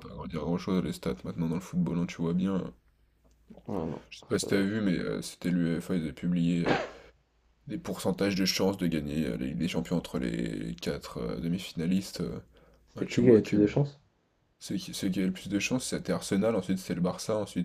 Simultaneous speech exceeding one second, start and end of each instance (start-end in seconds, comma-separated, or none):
none